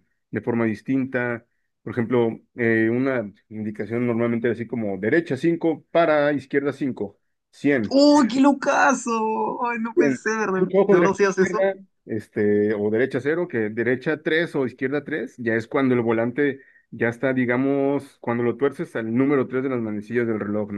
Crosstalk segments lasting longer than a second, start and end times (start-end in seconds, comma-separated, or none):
9.9-11.7